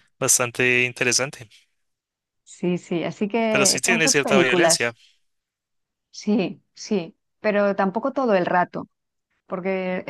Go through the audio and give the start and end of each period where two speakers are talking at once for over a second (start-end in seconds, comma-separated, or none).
3.5-4.9